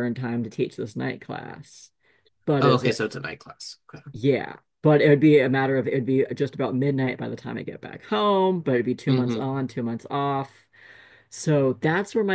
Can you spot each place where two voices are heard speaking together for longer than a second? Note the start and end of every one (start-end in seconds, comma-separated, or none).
none